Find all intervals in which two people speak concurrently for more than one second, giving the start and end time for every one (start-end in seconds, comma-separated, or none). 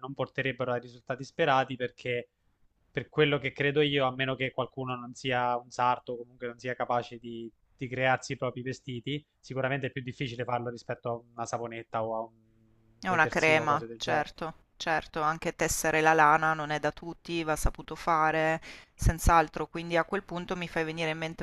13.1-14.3